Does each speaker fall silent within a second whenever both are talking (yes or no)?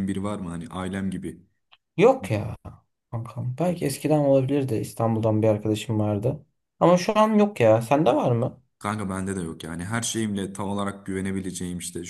yes